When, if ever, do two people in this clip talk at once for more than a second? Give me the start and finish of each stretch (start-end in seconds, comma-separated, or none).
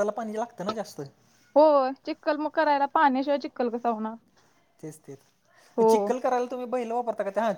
none